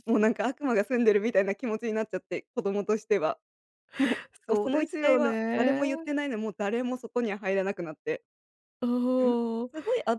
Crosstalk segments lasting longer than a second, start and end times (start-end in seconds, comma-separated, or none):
4.5-5.8